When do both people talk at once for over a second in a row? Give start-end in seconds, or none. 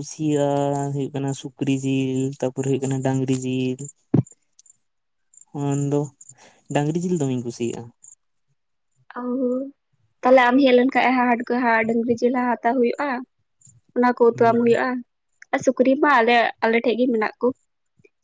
none